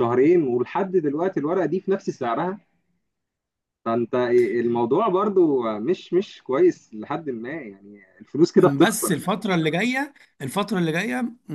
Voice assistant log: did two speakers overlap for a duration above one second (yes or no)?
no